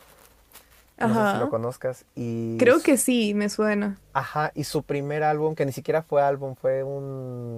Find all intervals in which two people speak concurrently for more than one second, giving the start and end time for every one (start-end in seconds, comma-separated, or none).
none